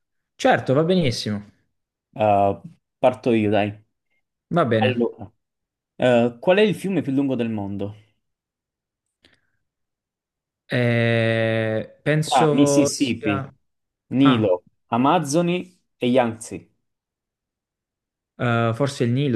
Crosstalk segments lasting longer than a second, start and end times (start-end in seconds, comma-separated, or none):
12.2-13.5